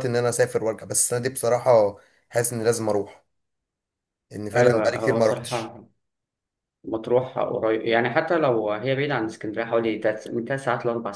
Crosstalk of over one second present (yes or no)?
yes